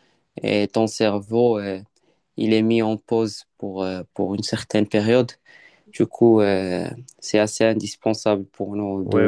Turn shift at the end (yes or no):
yes